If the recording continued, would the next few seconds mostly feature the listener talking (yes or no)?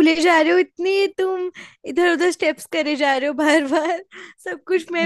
yes